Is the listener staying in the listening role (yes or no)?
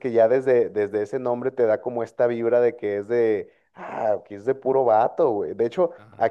yes